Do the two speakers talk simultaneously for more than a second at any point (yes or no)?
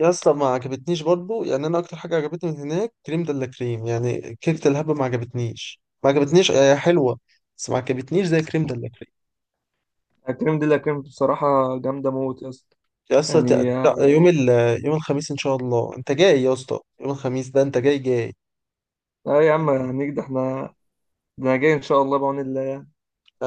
no